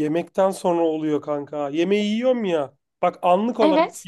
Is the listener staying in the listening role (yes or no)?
yes